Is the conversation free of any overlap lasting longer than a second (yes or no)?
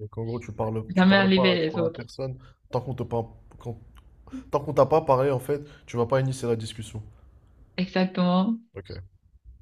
no